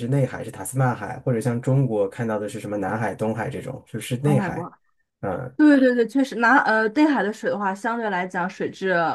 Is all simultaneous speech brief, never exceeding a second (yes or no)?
yes